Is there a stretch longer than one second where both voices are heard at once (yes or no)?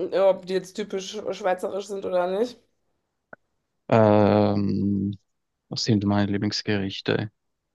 no